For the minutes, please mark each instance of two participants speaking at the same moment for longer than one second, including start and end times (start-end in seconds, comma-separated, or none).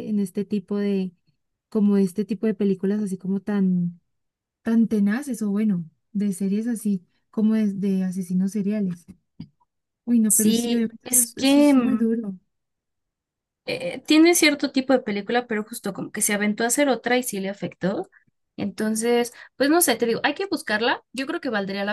10.3-12.1